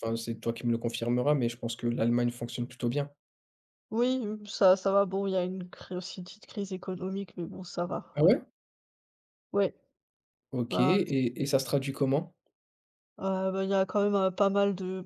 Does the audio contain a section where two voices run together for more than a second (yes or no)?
no